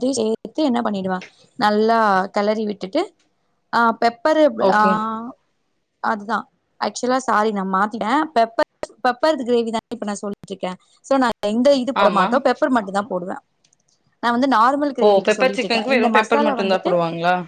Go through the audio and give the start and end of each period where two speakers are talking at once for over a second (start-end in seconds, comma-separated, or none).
15.0-16.9